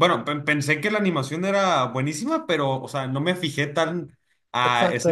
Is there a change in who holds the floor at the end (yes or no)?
yes